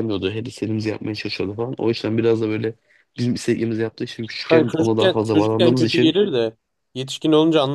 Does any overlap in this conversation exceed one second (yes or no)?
yes